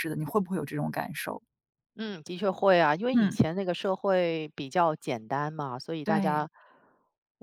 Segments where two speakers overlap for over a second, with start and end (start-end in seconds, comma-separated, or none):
none